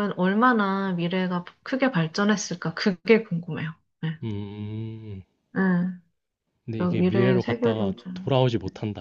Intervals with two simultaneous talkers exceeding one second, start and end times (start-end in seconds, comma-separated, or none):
6.8-8.3